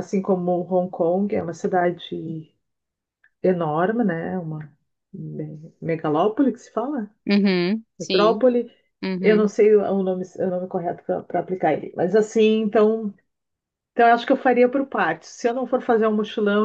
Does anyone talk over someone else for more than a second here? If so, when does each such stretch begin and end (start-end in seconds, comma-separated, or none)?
none